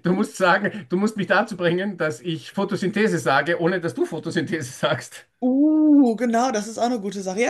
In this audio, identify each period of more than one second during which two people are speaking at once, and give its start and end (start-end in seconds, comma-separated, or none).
none